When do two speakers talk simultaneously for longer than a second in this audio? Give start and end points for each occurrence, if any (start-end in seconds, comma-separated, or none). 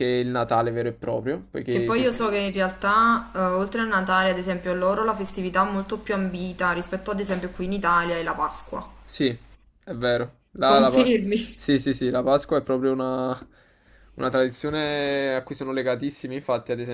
none